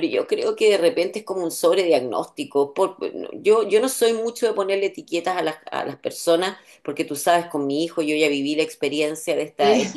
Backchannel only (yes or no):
yes